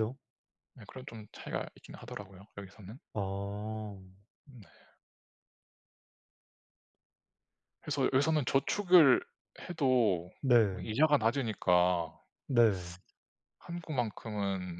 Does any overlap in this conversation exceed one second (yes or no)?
no